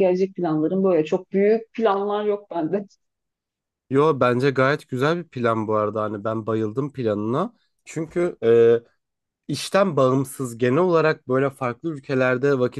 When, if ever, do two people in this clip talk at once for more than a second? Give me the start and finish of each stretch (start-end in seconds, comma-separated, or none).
none